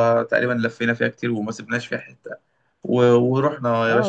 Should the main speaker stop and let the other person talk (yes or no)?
yes